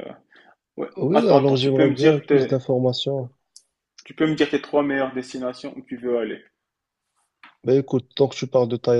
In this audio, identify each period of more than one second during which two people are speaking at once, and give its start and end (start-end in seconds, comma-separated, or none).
1.0-2.5